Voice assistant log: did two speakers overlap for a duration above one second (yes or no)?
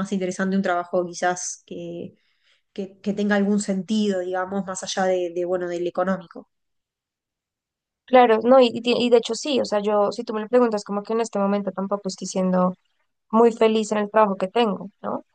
no